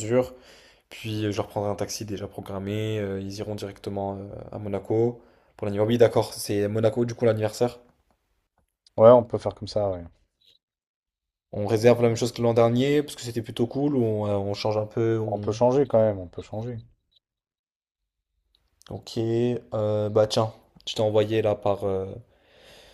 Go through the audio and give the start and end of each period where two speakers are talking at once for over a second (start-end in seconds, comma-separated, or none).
none